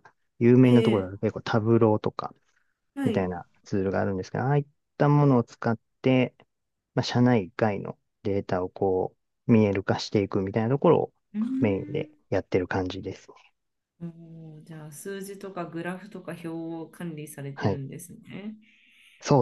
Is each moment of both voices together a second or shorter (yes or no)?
yes